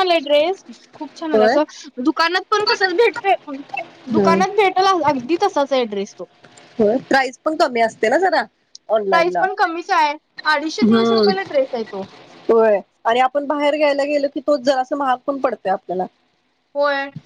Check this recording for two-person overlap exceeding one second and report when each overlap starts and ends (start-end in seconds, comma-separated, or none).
none